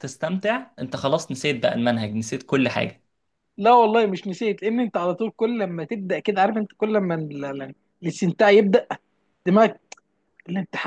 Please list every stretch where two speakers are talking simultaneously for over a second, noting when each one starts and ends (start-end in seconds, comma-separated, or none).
none